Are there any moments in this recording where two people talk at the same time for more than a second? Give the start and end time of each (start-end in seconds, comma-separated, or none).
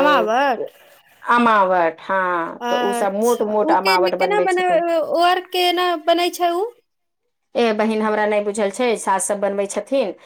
2.6-4.8